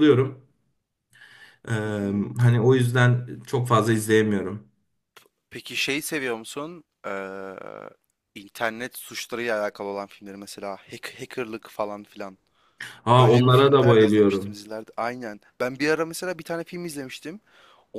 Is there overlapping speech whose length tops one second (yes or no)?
yes